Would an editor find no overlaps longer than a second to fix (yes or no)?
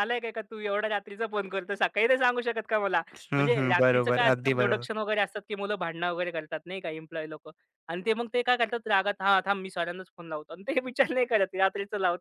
no